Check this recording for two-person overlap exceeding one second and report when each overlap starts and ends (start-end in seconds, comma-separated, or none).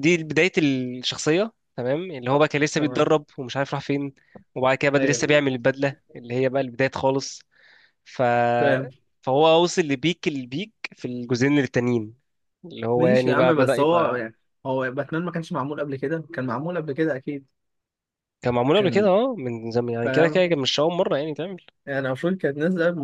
12.9-14.2